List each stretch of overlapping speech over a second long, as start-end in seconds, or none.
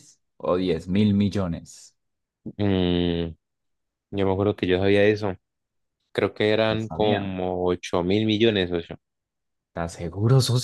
none